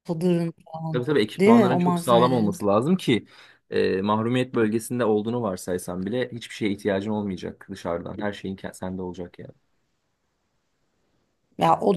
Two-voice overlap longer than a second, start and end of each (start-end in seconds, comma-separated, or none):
0.9-2.6